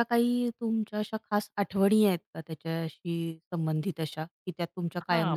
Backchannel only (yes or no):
no